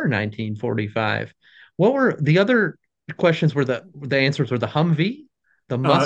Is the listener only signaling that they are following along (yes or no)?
no